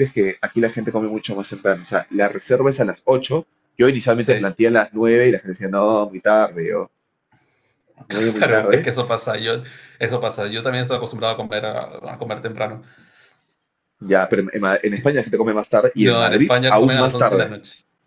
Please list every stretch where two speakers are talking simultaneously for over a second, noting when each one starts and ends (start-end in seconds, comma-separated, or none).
15.9-17.5